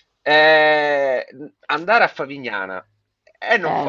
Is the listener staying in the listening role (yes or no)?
yes